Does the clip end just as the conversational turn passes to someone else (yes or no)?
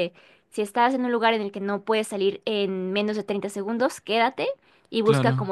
no